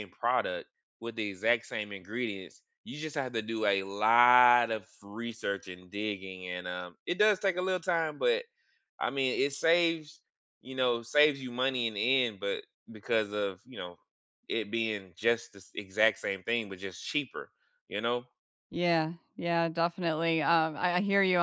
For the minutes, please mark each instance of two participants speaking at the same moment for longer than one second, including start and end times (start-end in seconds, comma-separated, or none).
none